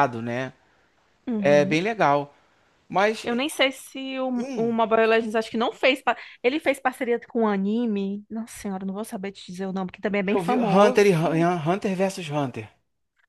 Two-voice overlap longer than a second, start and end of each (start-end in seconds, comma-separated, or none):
10.2-11.5